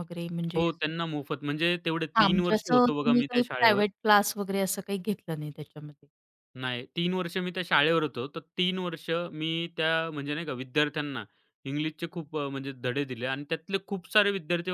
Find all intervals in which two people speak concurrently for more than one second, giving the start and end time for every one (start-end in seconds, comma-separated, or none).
2.2-3.8